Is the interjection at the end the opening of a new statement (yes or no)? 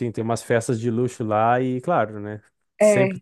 no